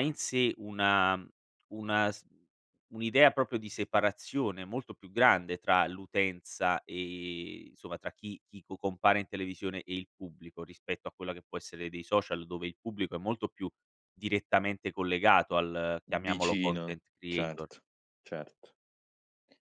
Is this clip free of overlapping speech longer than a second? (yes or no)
no